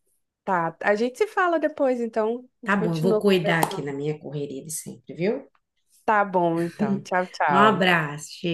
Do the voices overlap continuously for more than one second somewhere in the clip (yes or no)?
yes